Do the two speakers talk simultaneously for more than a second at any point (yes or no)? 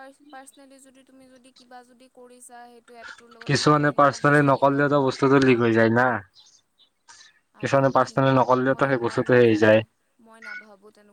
yes